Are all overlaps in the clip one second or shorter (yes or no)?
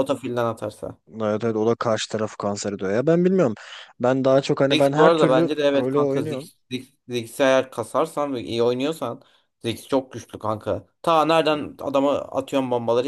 no